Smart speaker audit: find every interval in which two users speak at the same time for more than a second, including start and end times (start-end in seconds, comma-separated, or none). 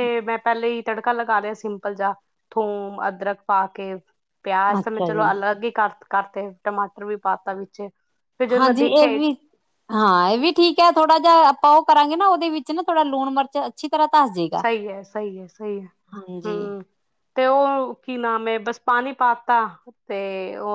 none